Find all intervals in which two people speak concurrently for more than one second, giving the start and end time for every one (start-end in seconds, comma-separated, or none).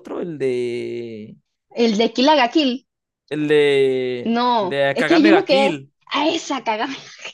4.2-5.8